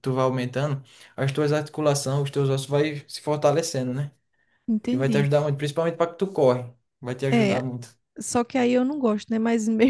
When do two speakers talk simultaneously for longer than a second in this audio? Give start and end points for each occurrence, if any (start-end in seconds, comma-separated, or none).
none